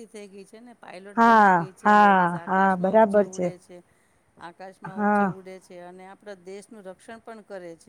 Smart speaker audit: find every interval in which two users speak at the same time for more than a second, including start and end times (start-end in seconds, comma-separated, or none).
1.2-3.2